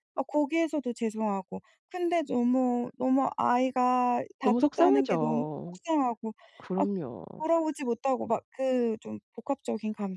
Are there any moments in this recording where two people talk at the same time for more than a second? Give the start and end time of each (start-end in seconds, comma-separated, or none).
4.4-5.8